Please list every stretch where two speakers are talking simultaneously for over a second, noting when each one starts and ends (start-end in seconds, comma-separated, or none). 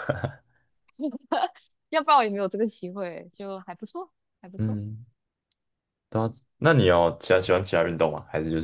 none